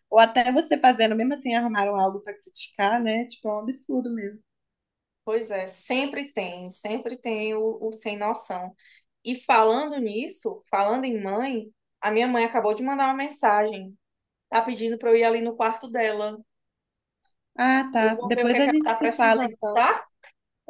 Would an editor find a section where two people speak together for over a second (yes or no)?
yes